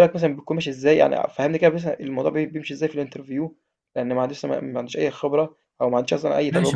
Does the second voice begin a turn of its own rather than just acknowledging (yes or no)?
yes